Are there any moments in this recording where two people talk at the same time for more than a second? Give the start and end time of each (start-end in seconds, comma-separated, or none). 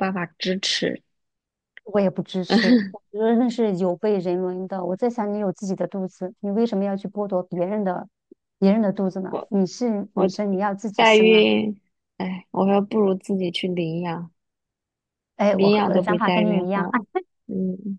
15.5-16.9